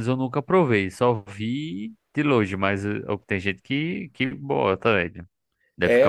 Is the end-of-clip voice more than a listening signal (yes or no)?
yes